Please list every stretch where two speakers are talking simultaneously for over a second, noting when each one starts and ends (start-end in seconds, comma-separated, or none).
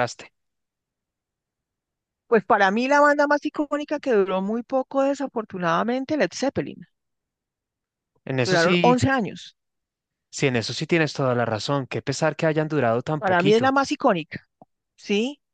none